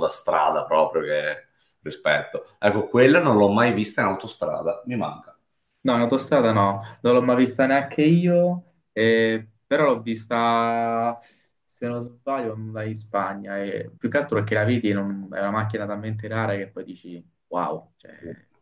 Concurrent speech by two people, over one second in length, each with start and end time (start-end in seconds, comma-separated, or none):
none